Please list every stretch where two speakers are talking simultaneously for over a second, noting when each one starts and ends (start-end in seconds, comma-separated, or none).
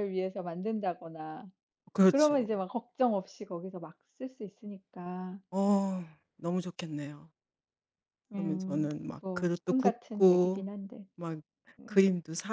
8.3-10.7